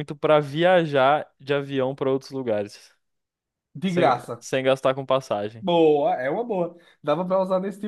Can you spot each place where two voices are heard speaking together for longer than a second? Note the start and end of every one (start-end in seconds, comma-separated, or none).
none